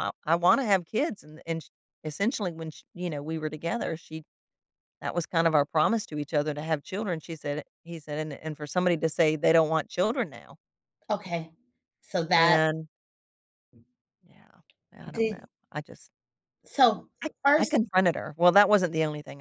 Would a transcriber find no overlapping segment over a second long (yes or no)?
yes